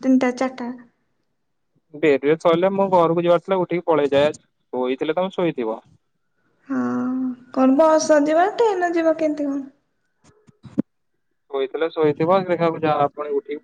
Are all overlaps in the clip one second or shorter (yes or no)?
yes